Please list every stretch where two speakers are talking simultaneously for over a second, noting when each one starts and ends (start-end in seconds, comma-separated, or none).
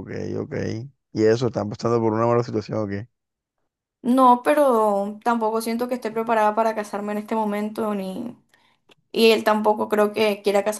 none